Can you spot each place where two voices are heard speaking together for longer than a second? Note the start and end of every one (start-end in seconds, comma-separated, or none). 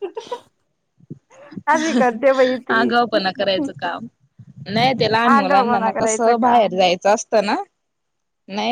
5.3-6.8